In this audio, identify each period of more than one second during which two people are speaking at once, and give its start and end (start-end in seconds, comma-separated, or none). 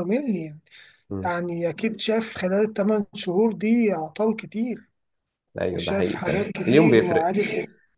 5.7-7.3